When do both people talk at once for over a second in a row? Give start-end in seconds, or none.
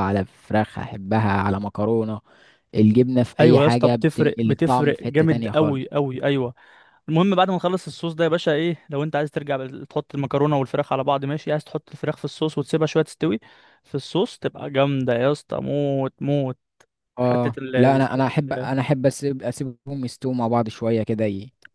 3.4-5.9, 17.2-18.7